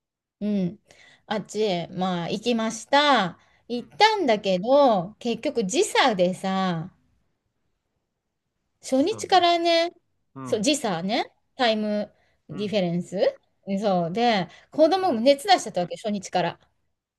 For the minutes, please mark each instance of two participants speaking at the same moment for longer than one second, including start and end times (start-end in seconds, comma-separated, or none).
none